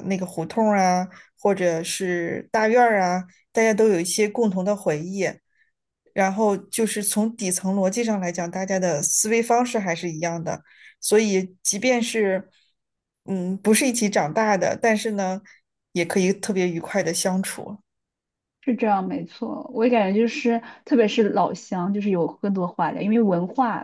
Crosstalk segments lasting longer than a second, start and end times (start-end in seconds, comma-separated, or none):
none